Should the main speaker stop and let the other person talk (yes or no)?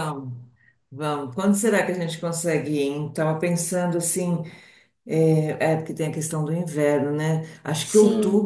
no